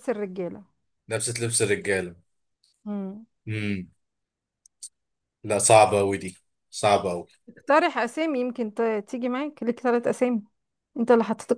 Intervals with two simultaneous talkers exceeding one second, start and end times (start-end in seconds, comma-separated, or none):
none